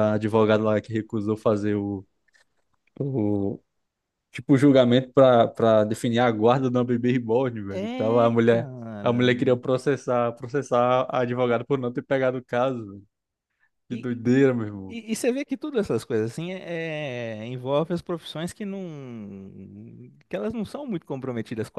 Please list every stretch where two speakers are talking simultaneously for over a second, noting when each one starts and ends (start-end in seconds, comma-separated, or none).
7.7-9.3